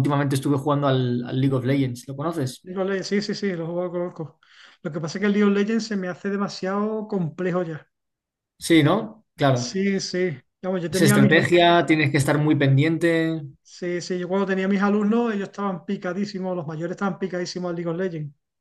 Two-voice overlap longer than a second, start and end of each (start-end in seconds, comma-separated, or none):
none